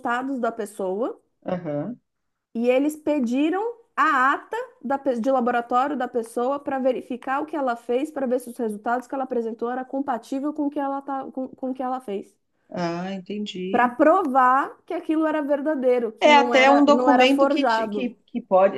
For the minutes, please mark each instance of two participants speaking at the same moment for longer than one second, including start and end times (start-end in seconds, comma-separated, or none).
16.2-18.1